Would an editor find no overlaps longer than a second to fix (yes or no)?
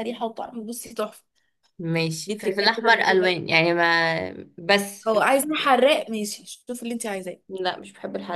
no